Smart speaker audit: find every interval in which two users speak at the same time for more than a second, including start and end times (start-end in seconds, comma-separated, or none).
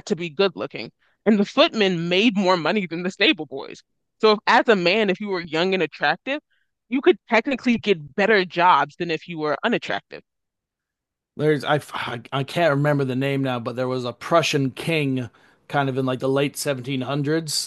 none